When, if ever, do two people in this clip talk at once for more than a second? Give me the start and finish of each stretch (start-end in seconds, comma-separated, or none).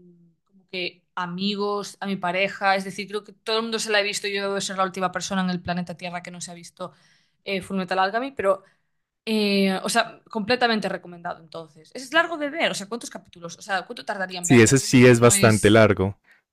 14.4-15.8